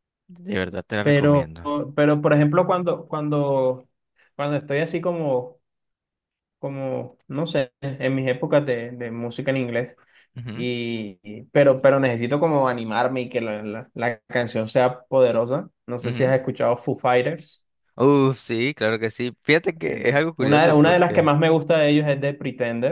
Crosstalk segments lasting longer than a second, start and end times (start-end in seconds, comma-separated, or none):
19.9-21.3